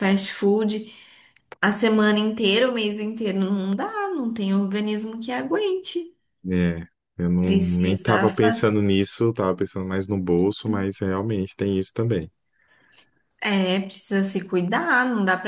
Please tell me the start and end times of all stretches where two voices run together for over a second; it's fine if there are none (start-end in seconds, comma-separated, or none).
7.4-8.7